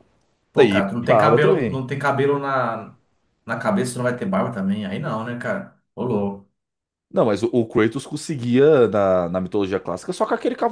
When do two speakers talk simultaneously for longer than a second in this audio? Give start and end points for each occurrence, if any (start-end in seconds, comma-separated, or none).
0.6-1.8